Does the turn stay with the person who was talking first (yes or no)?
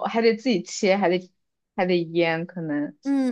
no